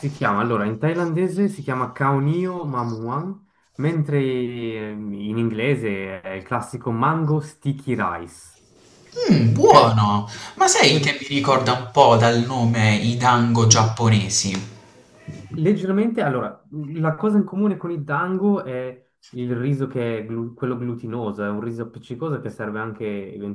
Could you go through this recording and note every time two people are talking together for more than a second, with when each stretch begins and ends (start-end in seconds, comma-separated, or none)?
none